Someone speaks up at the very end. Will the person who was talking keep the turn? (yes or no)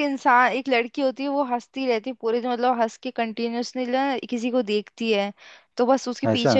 yes